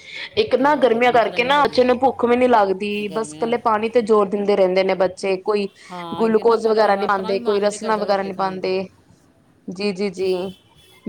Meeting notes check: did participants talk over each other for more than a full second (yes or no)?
yes